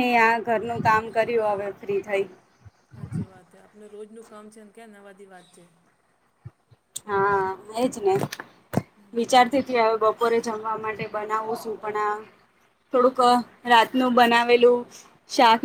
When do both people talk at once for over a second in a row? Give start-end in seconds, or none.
none